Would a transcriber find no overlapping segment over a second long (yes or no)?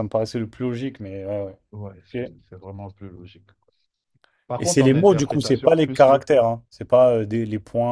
no